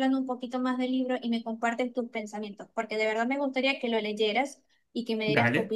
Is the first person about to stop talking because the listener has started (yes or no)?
yes